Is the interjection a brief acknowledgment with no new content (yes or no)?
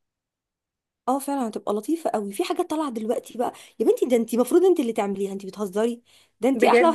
yes